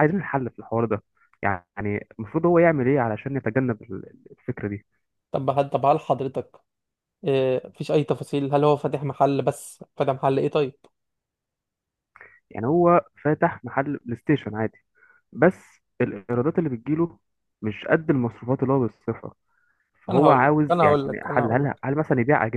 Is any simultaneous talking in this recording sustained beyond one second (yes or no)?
yes